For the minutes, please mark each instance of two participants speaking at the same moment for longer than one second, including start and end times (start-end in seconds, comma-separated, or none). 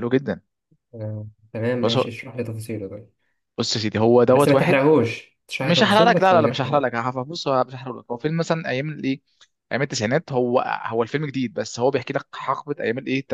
5.6-6.9